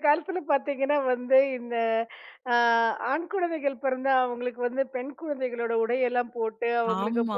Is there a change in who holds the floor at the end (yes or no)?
no